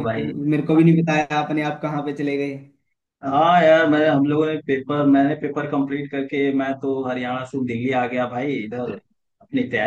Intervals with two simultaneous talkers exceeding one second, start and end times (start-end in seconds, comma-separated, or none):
none